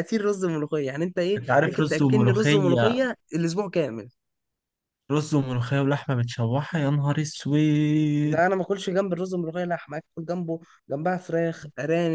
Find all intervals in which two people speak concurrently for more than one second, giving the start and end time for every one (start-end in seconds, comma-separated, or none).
1.4-3.0